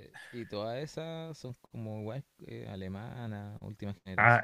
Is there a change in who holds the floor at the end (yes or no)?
yes